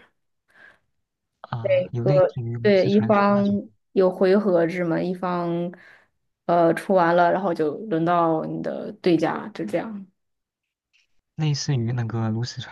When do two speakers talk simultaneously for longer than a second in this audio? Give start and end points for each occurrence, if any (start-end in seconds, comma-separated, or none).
1.6-3.6